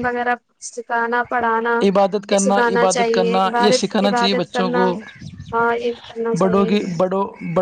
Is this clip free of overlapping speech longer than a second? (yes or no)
no